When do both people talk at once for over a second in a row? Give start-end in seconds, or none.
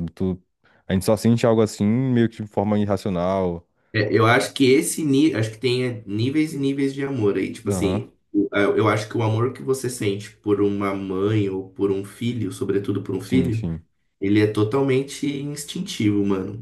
none